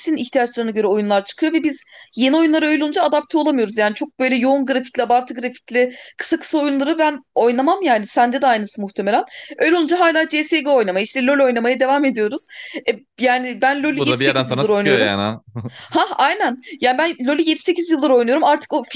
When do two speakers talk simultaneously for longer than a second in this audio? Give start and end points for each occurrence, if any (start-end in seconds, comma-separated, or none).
13.8-15.1